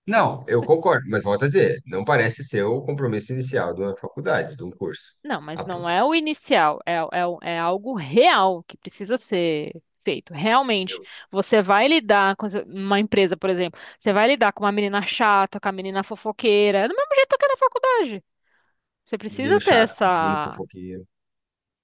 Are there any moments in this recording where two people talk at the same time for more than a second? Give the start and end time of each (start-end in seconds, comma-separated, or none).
19.3-20.6